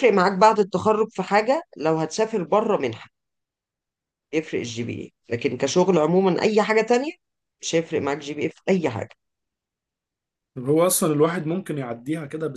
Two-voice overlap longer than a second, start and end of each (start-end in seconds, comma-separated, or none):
none